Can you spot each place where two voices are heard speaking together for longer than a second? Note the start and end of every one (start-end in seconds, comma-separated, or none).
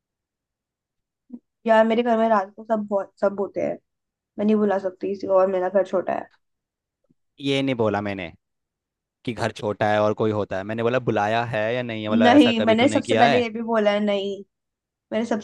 12.1-13.5